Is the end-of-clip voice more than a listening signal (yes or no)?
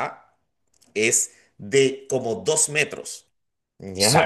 yes